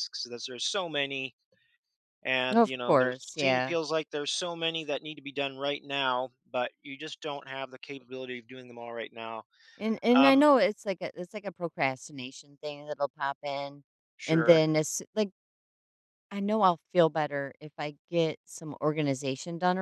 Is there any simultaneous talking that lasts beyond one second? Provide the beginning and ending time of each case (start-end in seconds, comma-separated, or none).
2.5-3.8